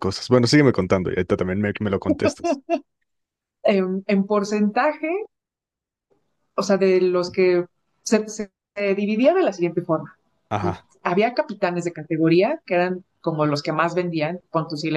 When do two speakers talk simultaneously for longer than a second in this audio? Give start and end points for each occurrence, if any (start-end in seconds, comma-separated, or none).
none